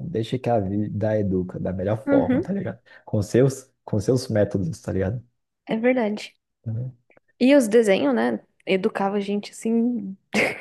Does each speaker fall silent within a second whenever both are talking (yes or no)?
yes